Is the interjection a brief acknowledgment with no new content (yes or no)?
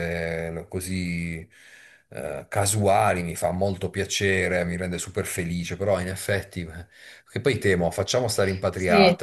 yes